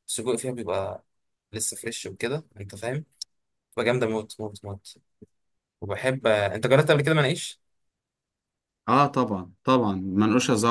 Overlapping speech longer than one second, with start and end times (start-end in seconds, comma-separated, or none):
none